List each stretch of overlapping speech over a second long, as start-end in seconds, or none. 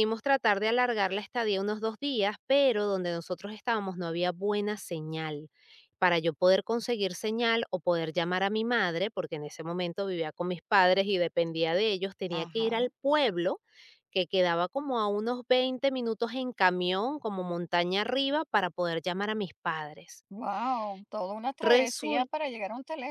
none